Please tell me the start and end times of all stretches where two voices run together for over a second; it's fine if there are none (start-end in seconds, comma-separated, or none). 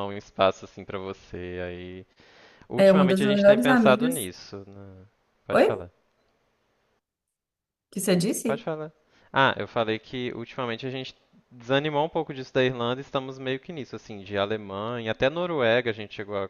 2.8-4.3